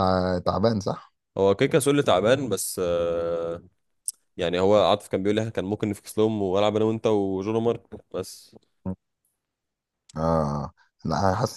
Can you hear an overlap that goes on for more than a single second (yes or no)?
no